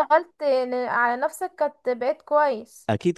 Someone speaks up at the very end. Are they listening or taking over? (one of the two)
taking over